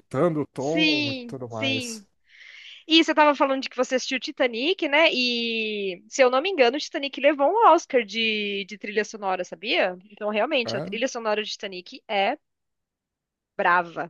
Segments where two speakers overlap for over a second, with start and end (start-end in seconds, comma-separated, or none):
0.6-2.0